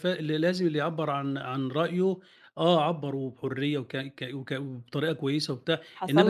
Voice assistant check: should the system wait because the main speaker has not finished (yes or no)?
no